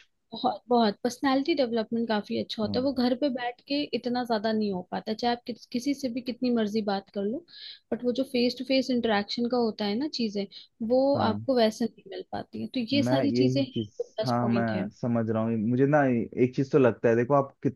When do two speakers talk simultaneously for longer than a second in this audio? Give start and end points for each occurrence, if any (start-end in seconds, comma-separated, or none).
12.9-14.9